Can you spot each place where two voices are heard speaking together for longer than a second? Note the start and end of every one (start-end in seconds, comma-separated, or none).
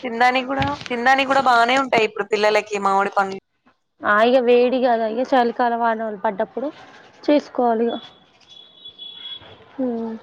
none